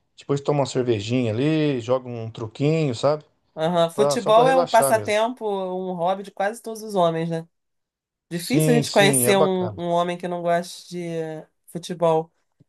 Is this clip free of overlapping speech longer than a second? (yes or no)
no